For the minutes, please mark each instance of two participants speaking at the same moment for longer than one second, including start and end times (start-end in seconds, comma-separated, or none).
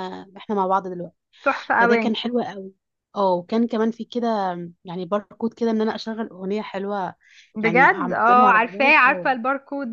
7.6-9.3